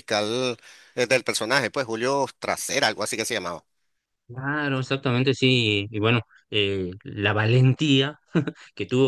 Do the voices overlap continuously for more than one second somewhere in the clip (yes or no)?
no